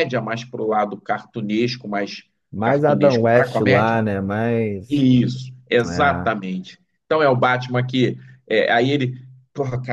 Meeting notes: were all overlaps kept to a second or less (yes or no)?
no